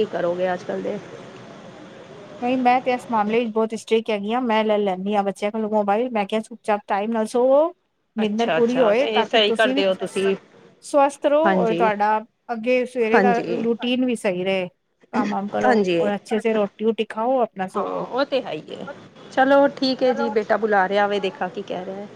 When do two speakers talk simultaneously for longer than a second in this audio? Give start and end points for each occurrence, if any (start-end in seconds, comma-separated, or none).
8.2-10.2